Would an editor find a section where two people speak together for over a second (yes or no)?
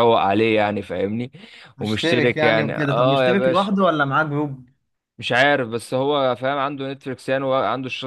yes